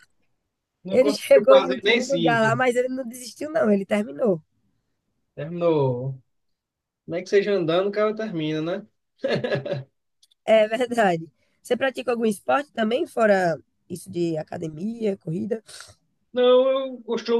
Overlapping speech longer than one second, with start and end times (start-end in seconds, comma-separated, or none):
0.9-2.5